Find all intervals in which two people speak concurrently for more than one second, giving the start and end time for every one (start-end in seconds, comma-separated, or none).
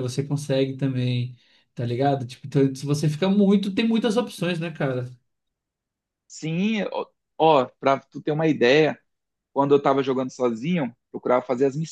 none